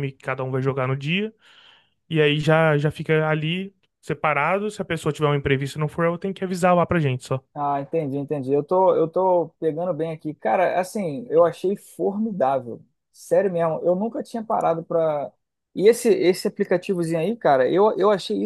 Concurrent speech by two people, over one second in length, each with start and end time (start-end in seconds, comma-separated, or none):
none